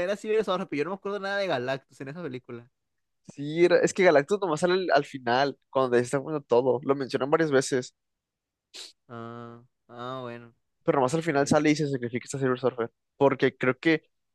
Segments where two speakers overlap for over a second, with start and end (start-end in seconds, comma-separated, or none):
none